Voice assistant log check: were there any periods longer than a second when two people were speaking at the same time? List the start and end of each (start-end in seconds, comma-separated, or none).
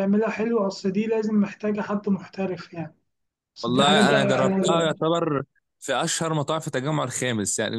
3.6-4.9